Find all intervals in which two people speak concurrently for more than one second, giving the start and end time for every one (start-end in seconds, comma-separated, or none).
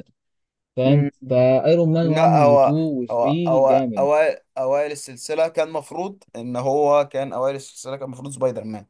2.0-4.1